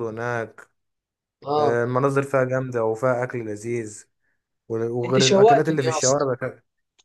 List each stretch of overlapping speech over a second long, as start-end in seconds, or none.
5.0-6.2